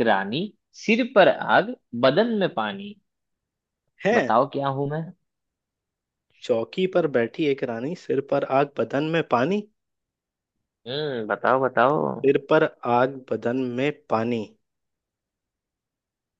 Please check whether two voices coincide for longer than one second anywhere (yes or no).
no